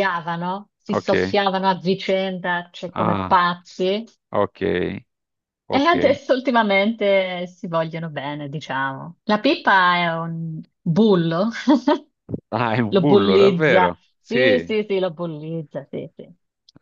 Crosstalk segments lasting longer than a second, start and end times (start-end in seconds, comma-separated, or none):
12.9-14.8